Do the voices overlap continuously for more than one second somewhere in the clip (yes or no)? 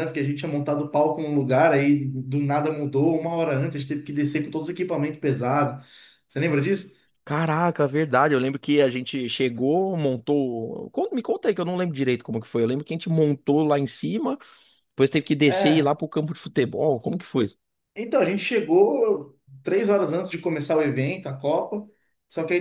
no